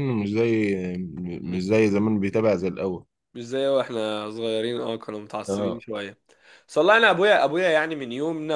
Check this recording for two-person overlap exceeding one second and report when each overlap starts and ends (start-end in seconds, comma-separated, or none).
none